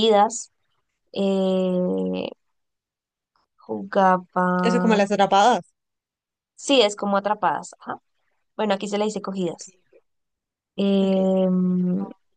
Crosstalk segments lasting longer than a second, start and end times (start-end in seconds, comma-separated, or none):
none